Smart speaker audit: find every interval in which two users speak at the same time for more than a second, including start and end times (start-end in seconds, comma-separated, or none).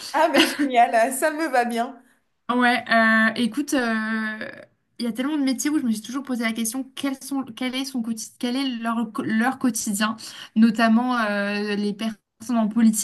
none